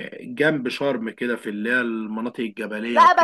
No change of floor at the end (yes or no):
no